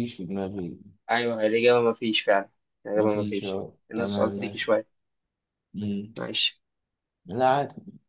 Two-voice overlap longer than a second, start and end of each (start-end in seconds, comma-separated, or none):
3.0-4.6